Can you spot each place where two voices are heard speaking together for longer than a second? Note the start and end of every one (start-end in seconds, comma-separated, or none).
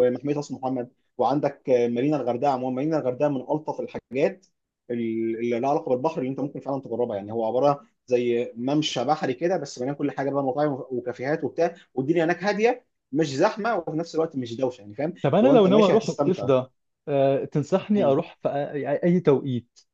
15.2-16.5